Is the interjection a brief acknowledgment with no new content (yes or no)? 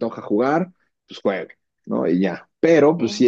yes